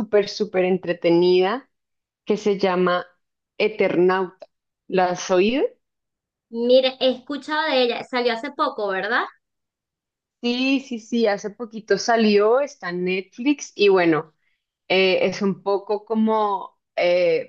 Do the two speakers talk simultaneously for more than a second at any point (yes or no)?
no